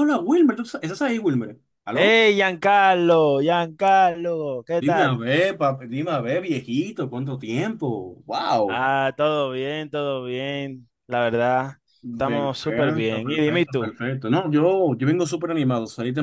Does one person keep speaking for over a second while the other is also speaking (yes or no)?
yes